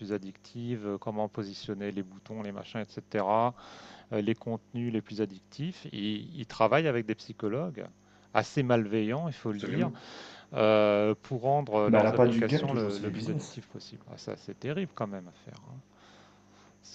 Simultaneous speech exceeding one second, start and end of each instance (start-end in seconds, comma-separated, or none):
11.9-13.6